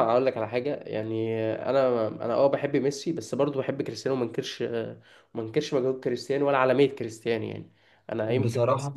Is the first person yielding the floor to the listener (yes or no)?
no